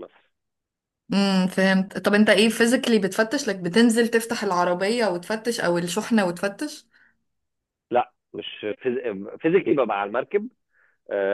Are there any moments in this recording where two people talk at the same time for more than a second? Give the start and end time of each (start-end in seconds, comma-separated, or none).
none